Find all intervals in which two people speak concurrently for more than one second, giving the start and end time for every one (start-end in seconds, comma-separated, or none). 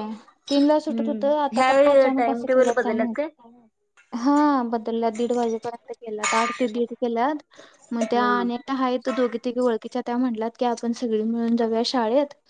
0.9-3.1